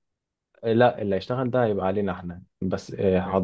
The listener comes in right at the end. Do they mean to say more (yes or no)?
no